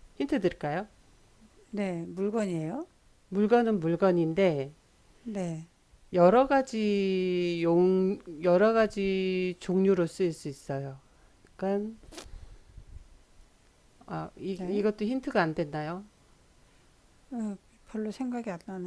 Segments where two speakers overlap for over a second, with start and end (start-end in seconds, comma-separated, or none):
none